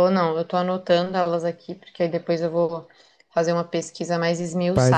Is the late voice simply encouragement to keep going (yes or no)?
no